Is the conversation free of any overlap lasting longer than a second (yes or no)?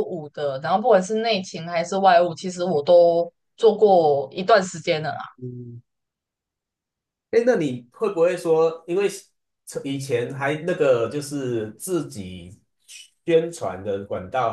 yes